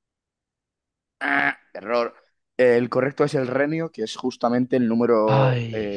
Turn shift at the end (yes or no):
no